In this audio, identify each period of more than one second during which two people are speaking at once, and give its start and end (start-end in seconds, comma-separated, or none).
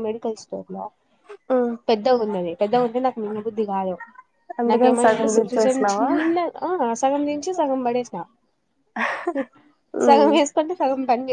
4.7-6.1